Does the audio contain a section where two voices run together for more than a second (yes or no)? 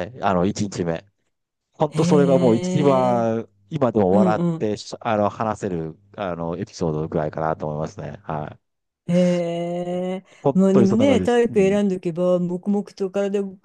yes